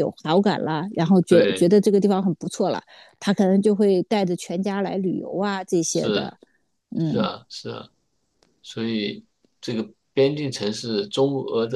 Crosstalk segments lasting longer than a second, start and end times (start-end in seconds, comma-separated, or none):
none